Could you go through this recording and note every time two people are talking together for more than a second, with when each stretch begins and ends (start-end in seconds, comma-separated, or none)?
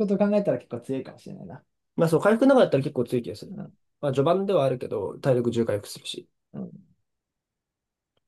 none